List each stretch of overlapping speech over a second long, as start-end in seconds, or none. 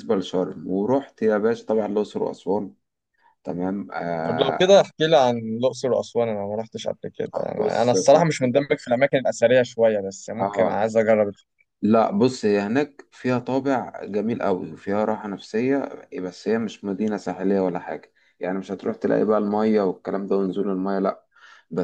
7.3-8.6